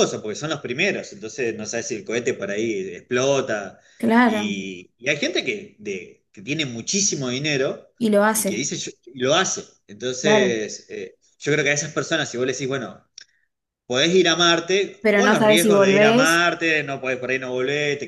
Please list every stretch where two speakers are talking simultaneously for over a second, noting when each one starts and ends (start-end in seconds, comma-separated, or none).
15.0-16.4